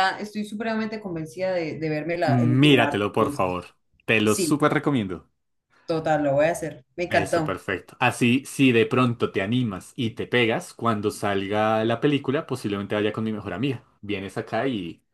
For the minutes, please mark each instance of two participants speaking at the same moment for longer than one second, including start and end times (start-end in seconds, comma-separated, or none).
2.2-3.6